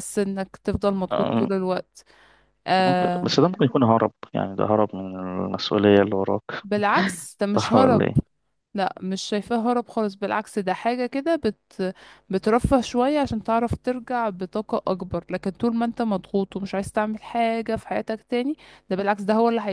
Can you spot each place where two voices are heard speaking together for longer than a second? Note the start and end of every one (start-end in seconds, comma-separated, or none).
none